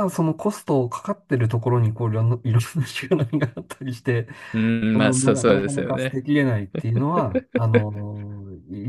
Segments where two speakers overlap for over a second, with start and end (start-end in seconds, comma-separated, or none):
4.9-6.2